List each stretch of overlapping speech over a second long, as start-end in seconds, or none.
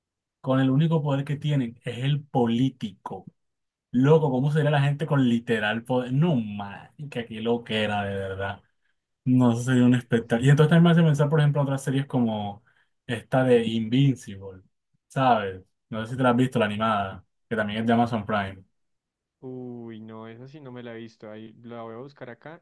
none